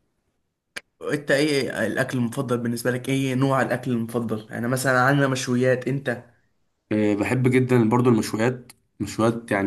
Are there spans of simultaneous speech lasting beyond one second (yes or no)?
no